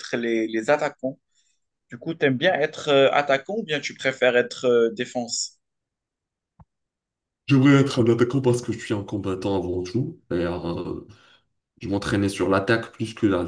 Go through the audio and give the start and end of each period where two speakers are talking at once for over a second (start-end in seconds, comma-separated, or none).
none